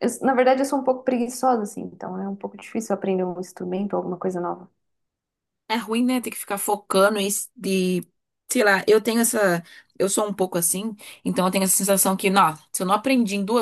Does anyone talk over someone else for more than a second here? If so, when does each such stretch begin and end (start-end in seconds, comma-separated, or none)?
none